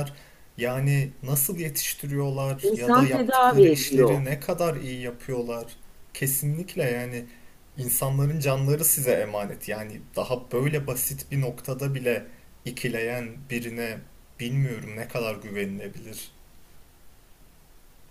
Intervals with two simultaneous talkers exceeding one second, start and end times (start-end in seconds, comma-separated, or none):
2.6-4.2